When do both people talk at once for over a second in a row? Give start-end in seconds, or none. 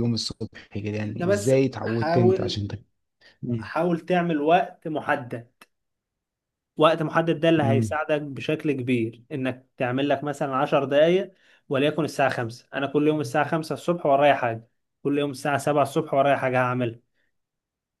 1.0-2.6